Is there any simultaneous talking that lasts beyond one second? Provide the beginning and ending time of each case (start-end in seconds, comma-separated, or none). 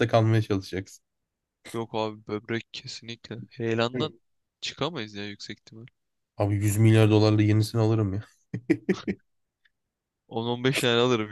none